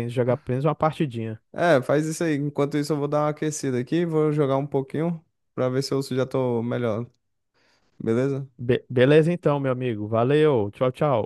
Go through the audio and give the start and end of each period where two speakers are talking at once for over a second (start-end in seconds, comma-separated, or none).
none